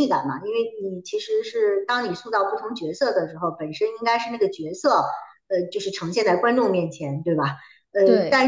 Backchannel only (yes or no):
yes